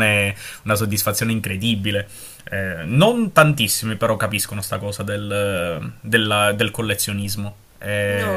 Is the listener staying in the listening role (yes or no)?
no